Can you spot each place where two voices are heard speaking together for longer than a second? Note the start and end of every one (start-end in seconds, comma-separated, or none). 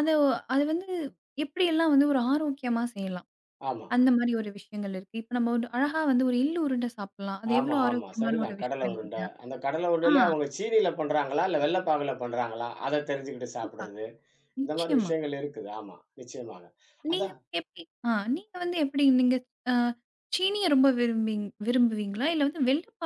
7.6-9.3